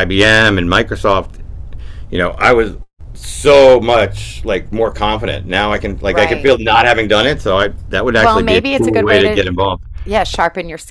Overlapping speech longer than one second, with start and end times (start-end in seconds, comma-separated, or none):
8.2-9.4